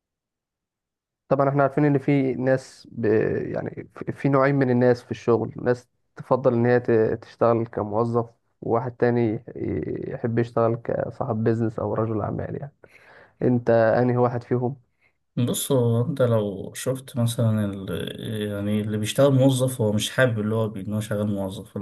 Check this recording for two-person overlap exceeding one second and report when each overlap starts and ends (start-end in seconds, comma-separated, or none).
none